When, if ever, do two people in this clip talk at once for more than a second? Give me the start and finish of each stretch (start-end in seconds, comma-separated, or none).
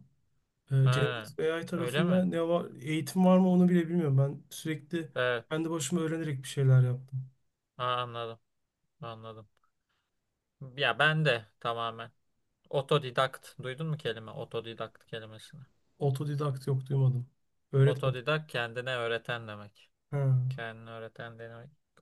none